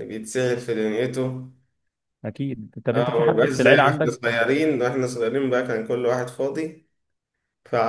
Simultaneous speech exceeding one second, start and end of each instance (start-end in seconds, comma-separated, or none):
2.9-4.3